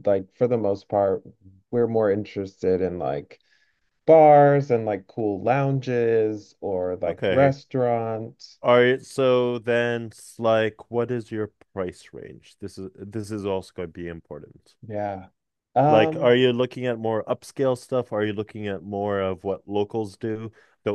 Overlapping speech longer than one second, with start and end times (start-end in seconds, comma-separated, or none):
none